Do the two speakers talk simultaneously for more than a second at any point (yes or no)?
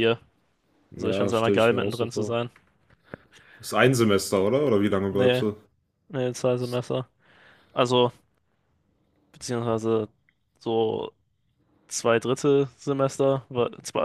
yes